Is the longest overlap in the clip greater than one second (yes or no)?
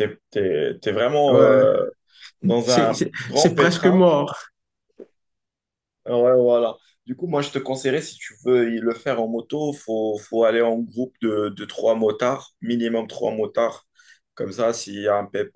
yes